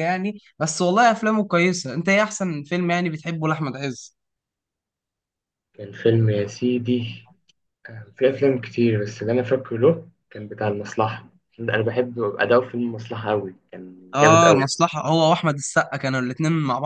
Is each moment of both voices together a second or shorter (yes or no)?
yes